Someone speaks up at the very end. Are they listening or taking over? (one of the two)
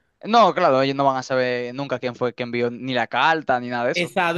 taking over